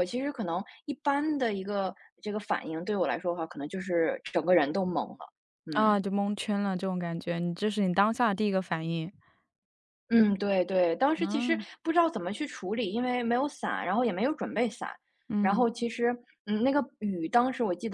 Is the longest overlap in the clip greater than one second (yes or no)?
no